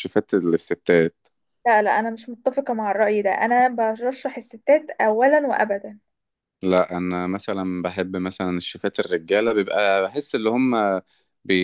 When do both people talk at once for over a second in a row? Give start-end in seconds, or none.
none